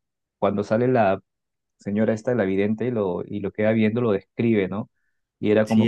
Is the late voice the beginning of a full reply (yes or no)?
no